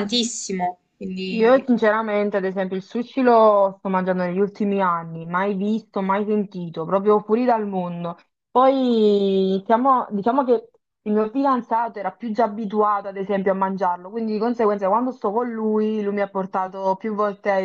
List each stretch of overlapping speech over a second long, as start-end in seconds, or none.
none